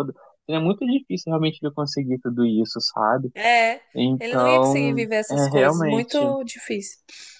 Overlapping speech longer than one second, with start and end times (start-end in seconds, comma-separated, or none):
4.2-6.2